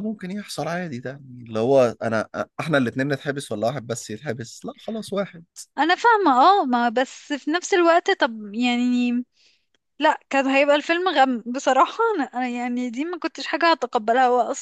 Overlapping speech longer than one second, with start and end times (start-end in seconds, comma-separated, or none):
none